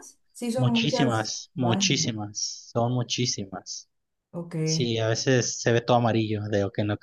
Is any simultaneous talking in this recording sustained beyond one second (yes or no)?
yes